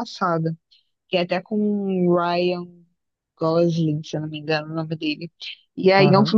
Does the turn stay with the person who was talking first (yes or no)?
yes